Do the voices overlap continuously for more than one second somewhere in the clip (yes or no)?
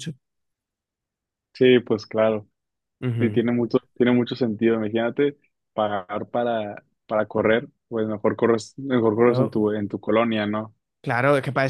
no